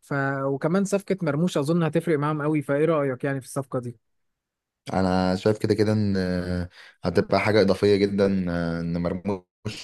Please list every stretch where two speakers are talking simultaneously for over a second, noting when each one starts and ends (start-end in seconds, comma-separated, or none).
none